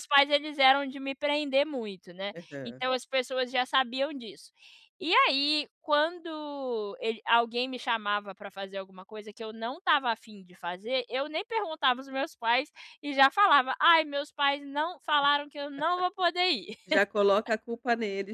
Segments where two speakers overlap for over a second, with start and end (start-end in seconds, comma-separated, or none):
none